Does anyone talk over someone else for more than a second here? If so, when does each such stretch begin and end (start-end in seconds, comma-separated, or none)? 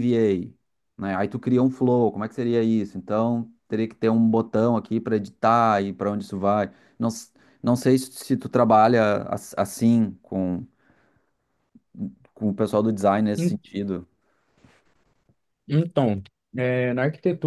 none